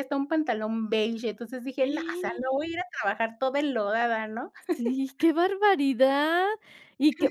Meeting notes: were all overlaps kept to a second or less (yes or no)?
yes